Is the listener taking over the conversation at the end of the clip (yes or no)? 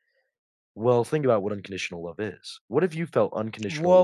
yes